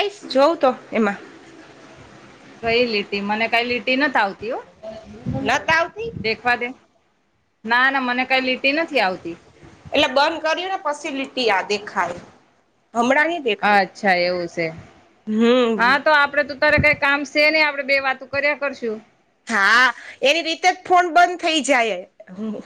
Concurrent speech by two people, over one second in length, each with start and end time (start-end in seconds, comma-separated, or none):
none